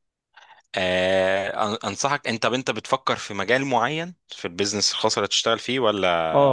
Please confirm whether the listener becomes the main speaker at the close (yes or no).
yes